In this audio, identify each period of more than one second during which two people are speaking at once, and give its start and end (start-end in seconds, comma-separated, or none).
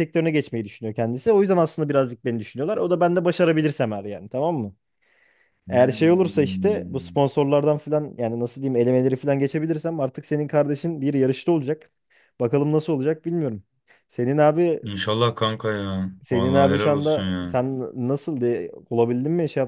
5.7-7.2, 16.2-17.6